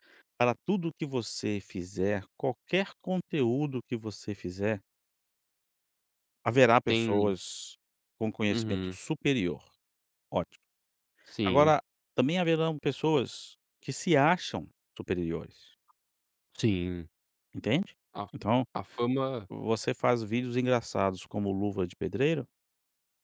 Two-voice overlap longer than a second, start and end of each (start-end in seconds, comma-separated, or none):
none